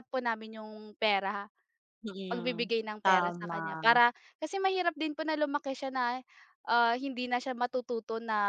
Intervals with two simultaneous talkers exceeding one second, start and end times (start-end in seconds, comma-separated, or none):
2.2-4.0